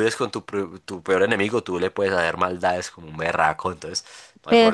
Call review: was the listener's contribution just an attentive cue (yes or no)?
no